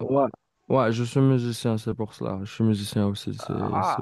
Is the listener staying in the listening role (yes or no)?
no